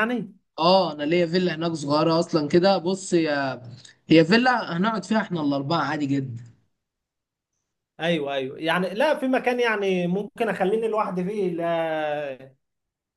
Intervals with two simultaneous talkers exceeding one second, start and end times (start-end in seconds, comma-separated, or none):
none